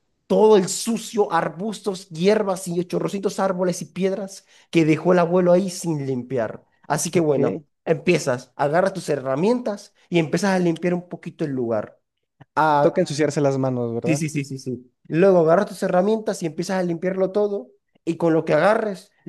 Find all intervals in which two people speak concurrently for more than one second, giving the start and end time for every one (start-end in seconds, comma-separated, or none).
none